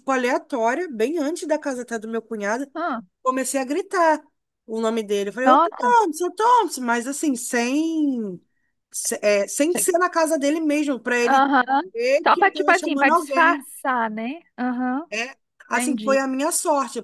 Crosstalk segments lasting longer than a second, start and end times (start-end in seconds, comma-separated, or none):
12.2-13.7